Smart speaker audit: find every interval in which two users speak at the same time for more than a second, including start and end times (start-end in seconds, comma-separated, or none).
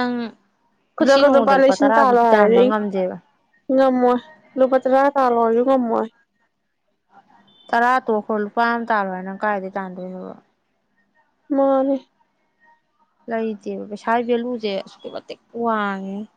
1.0-2.6